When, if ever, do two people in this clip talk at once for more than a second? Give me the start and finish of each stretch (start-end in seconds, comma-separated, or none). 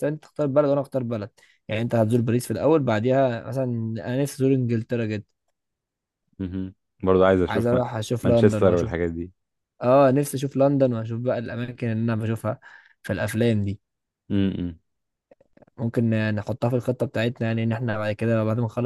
7.5-8.9